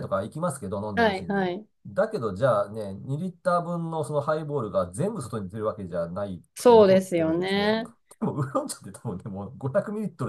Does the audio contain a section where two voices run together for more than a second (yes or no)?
yes